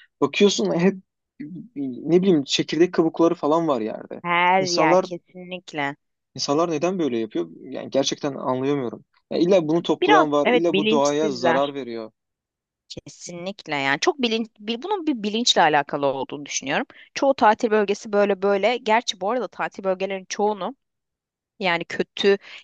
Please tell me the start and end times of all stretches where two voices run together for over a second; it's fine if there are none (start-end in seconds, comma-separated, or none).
10.0-11.7